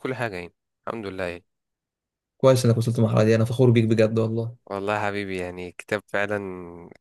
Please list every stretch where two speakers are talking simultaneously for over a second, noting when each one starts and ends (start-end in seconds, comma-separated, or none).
none